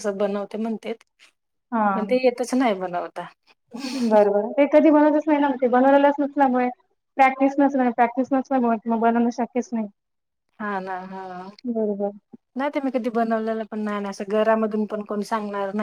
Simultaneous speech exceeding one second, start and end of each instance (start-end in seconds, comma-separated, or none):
none